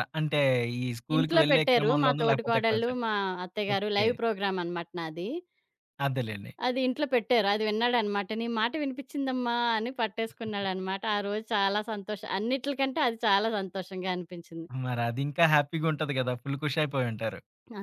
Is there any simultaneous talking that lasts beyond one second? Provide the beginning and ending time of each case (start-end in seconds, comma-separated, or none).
1.1-3.0